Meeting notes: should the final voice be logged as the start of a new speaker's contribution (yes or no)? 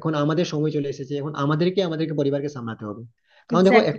no